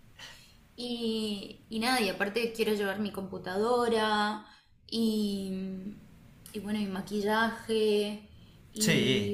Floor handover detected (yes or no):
no